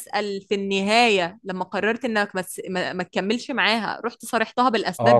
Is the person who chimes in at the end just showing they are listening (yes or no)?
no